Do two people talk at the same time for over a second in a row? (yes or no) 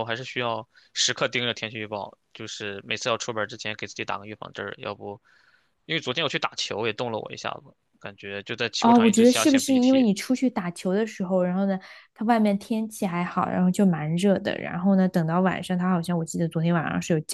yes